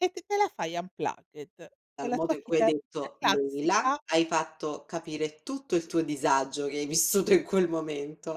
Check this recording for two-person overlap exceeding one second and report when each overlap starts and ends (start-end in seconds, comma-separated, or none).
2.0-4.0